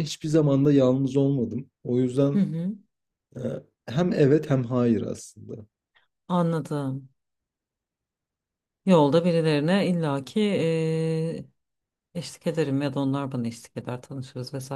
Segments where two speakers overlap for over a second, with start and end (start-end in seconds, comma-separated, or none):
none